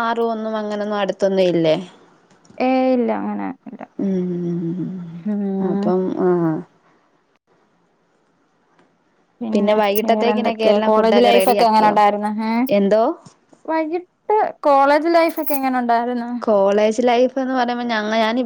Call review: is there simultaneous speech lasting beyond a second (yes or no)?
yes